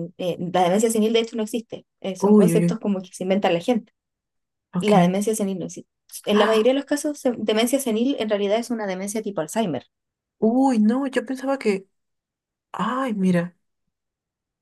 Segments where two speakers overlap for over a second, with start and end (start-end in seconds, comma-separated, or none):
none